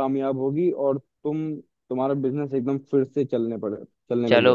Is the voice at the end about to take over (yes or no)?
yes